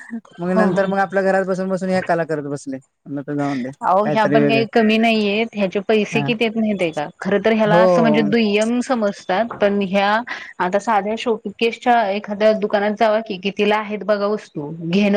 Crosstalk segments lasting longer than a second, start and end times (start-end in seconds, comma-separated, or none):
none